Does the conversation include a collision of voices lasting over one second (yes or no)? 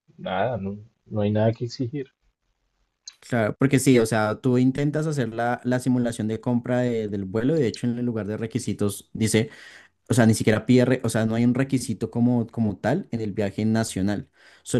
no